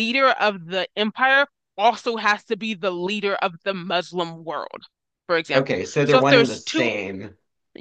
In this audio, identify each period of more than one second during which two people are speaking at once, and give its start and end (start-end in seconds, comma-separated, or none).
5.5-6.9